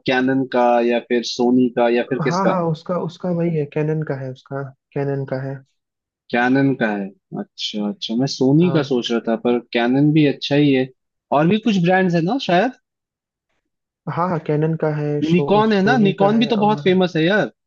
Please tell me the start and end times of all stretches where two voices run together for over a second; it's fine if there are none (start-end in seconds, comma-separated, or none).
15.3-16.8